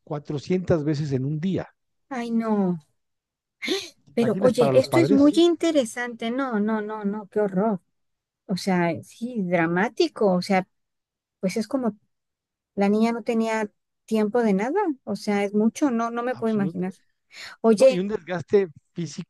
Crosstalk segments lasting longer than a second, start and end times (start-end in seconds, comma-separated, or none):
4.1-5.4